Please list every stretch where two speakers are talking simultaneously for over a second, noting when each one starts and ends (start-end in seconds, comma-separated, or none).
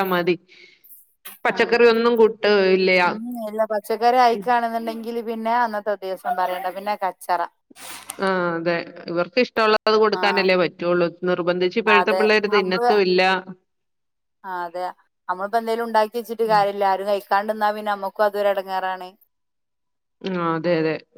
none